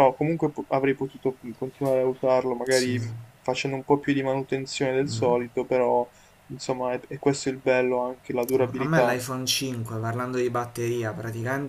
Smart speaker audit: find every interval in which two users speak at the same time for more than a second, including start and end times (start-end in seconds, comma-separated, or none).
none